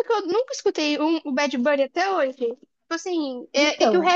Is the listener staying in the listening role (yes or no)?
yes